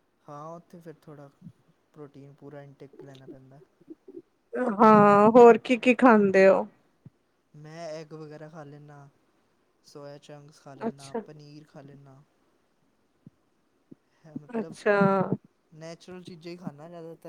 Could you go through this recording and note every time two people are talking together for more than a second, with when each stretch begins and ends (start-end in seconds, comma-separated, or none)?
none